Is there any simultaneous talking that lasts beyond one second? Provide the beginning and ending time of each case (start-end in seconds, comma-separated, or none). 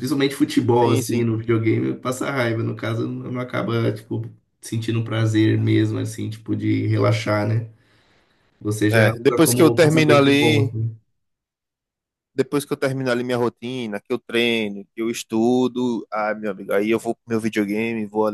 8.9-10.7